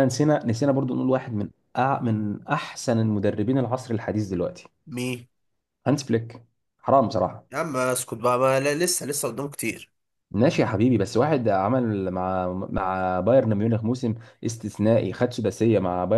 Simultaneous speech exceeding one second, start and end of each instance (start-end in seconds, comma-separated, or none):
none